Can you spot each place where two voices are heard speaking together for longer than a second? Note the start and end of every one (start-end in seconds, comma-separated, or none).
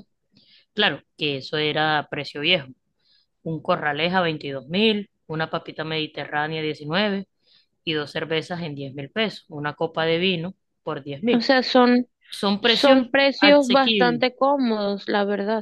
12.6-14.2